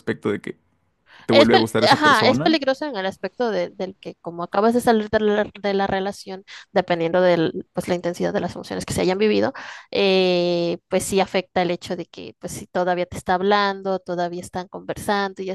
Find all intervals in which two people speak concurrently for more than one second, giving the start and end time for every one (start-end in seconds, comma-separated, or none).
1.3-2.6